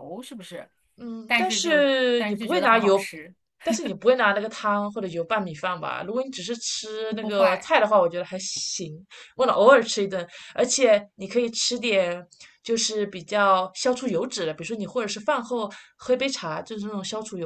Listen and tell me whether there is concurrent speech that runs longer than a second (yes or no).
yes